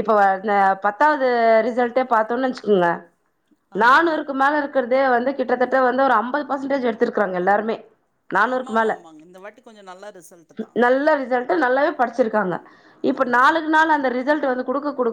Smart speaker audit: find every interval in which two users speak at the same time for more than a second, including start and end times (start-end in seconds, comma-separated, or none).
none